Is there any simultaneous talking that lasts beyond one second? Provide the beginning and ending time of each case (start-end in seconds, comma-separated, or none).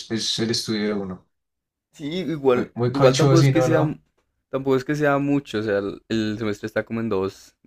2.5-3.8